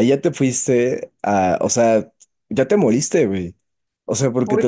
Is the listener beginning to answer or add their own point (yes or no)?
no